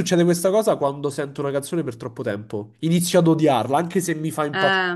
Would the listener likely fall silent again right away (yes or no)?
yes